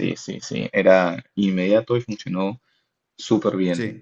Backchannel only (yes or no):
no